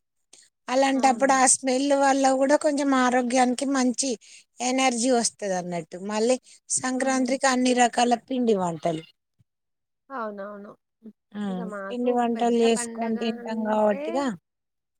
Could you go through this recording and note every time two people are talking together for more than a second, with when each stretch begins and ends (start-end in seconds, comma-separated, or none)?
11.9-14.0